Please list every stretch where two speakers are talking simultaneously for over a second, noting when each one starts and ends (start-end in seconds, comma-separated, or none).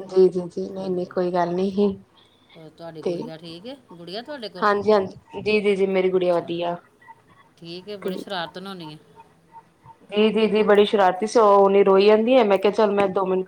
none